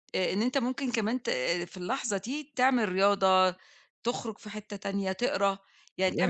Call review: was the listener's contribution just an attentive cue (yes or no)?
yes